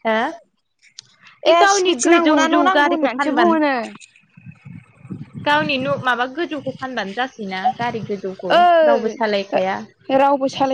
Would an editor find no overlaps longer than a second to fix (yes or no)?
no